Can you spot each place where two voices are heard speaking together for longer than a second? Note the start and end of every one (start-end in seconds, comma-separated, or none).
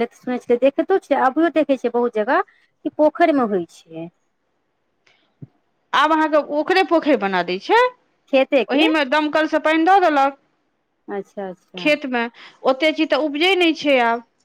none